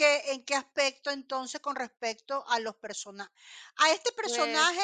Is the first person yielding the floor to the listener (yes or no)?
no